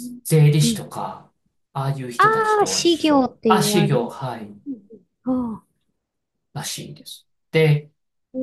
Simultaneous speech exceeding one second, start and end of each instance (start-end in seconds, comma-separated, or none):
2.2-4.1